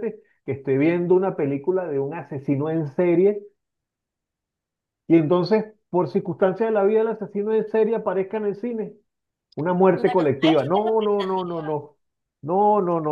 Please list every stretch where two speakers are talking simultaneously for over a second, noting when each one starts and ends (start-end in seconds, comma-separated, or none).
9.9-11.6